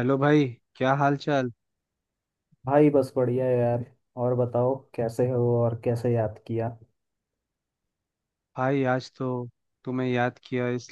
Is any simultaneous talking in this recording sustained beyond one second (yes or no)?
no